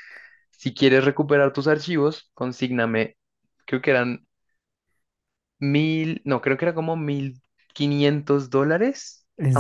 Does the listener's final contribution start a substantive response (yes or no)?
no